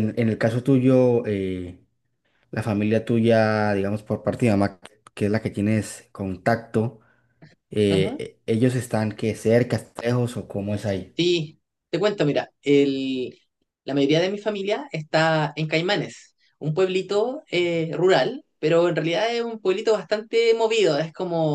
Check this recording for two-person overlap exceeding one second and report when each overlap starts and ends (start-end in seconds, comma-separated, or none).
none